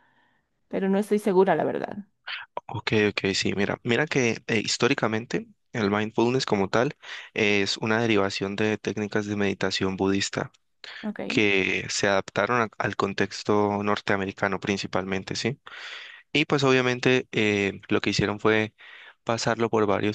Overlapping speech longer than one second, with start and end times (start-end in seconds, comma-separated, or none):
none